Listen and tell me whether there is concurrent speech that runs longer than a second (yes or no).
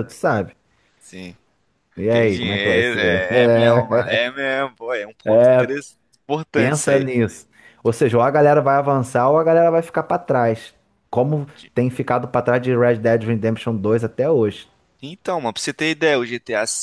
yes